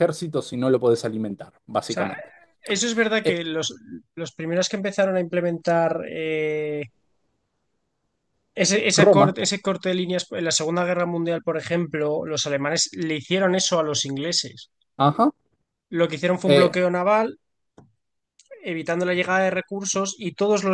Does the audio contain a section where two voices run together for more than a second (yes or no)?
no